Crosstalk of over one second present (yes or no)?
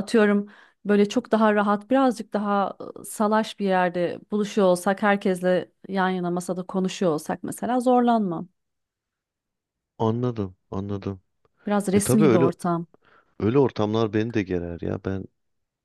no